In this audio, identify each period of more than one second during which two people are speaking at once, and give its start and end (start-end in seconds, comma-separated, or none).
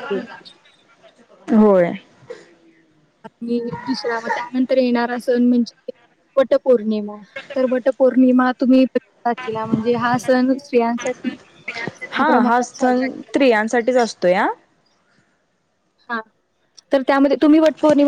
12.1-14.1